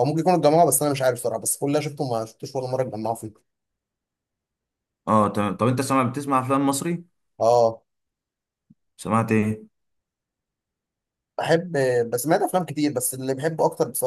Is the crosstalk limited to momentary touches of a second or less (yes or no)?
yes